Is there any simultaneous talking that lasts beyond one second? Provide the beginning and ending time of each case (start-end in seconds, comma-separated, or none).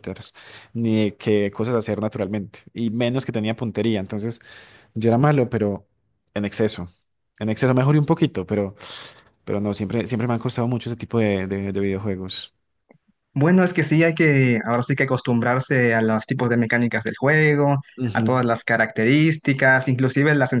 none